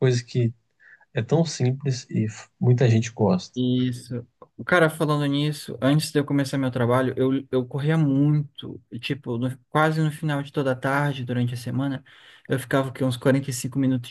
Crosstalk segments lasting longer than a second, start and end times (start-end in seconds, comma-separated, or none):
none